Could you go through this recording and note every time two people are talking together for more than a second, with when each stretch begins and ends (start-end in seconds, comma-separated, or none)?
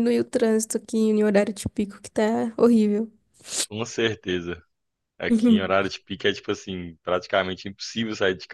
none